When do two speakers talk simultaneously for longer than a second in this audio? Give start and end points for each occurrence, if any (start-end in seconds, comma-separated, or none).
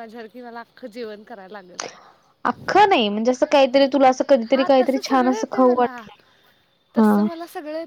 4.5-6.0